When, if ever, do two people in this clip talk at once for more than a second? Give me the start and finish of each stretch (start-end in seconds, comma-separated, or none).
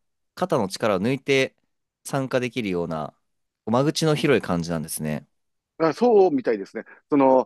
none